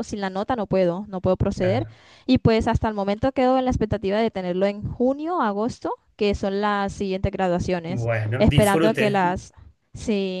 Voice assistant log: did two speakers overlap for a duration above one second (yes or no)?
yes